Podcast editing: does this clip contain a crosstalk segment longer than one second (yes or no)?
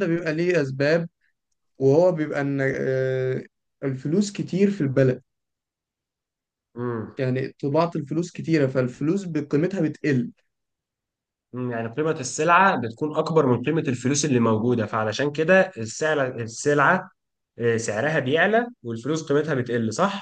no